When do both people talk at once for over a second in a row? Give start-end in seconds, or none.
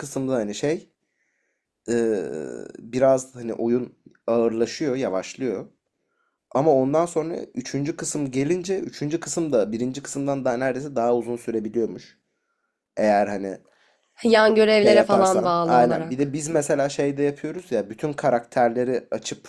14.8-16.4